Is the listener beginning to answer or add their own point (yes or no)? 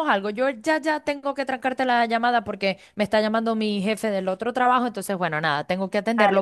no